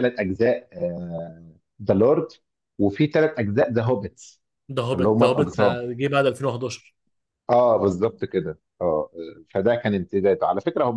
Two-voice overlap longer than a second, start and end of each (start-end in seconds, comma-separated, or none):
none